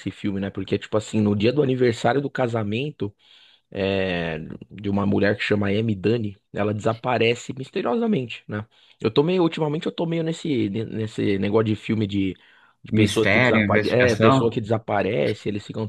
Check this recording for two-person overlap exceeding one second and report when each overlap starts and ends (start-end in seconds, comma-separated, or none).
12.9-14.6